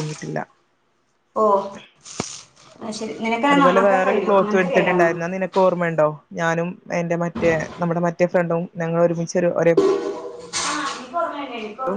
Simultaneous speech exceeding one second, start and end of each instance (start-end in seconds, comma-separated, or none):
3.5-5.1